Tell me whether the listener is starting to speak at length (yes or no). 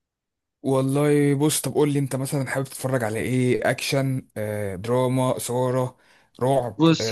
yes